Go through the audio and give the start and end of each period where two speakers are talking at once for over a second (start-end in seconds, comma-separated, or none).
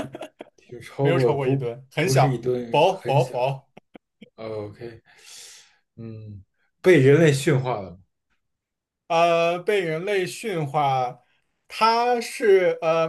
1.0-3.3